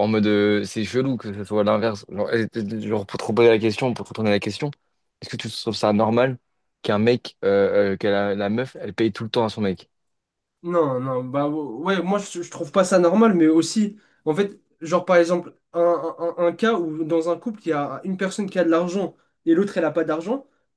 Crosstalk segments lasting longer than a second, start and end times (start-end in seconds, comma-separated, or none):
none